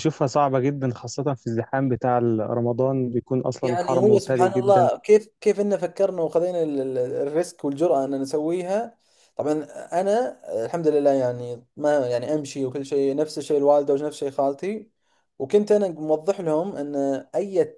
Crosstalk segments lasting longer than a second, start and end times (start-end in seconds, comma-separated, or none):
3.6-4.9